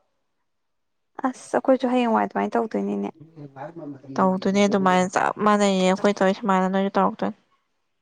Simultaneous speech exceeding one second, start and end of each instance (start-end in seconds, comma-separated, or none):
none